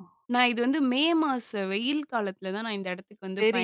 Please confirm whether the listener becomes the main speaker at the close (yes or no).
yes